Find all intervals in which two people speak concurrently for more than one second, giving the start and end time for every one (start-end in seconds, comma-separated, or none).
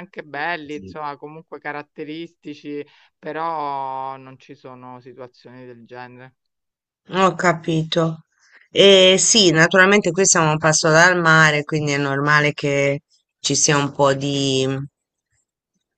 none